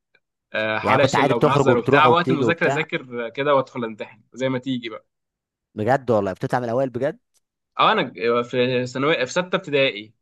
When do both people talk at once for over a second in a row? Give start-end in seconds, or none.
0.8-2.9